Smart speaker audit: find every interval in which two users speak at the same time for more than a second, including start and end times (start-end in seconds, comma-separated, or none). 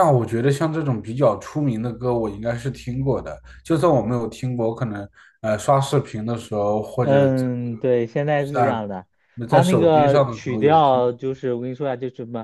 9.5-11.0